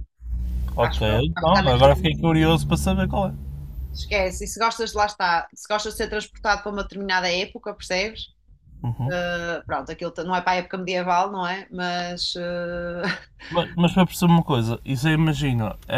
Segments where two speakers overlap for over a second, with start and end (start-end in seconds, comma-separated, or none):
0.8-2.5